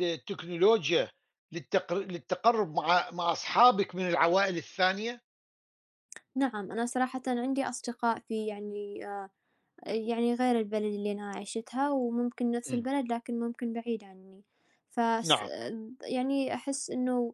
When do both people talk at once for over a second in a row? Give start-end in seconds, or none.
none